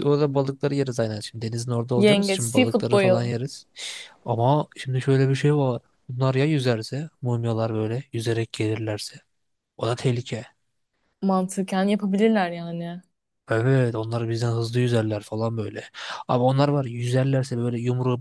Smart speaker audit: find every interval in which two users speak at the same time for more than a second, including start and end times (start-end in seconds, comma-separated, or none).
2.0-3.3